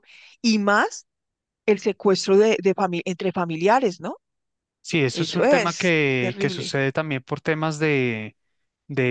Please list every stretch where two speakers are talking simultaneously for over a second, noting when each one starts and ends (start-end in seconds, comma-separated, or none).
5.1-6.8